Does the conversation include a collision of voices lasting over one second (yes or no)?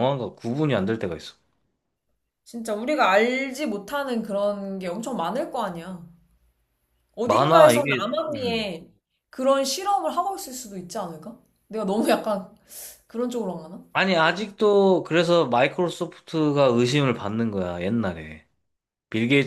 yes